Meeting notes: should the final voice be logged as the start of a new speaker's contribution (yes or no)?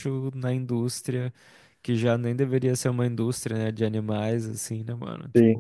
yes